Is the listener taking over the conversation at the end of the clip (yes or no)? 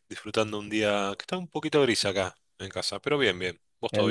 yes